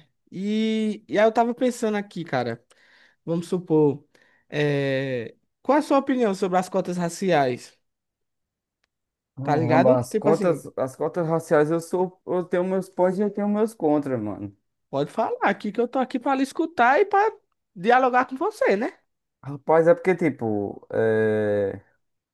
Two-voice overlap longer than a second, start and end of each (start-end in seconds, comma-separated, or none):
9.4-10.6